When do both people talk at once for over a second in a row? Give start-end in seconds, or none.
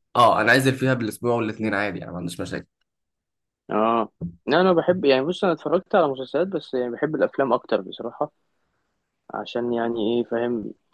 none